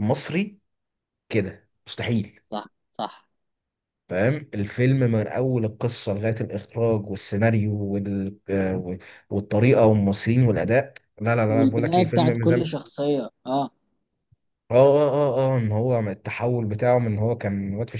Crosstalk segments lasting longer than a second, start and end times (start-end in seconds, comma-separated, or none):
11.5-12.7